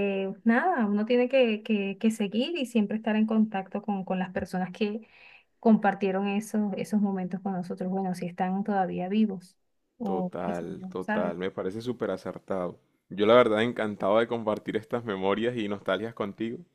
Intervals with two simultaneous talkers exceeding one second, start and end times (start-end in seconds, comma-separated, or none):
10.0-11.3